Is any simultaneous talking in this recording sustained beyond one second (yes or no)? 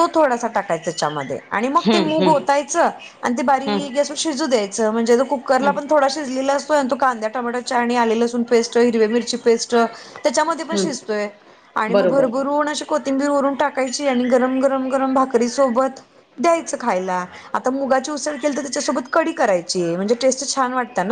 no